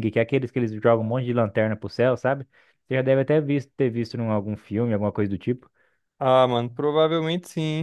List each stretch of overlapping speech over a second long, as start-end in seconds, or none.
none